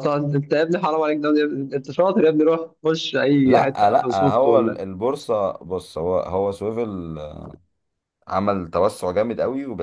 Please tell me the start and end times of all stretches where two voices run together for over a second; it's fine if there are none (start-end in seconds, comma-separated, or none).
3.4-4.8